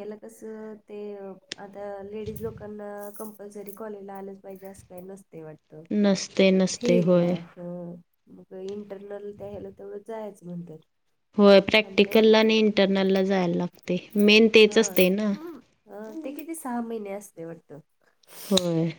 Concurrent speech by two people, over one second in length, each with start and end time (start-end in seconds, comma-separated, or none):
none